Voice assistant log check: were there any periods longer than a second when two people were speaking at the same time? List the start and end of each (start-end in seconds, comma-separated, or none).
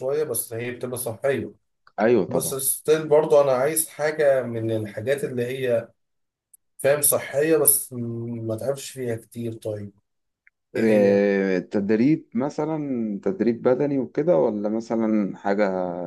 none